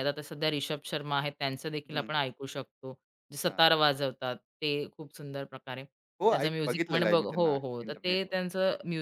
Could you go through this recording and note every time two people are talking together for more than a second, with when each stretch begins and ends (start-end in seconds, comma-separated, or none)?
6.3-8.3